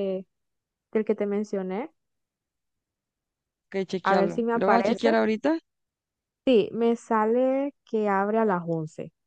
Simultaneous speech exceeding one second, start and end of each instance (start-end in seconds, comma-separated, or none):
4.0-5.2